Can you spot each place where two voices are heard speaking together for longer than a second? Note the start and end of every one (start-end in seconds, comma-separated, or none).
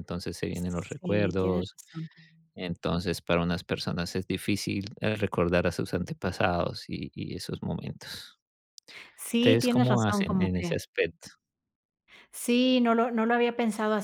0.5-1.8, 9.4-10.7